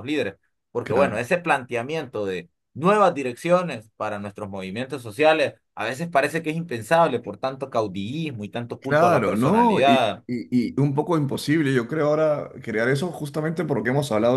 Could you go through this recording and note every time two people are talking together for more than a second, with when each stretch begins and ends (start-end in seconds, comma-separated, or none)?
8.8-10.2